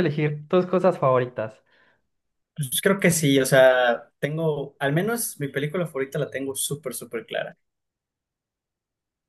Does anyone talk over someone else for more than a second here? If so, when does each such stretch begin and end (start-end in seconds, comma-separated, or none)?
none